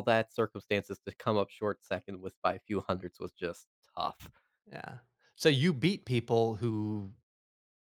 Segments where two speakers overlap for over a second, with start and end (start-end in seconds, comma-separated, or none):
none